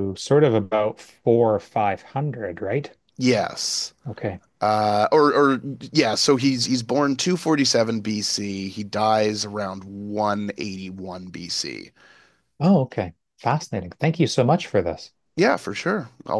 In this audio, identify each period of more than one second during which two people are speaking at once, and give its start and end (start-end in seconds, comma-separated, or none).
none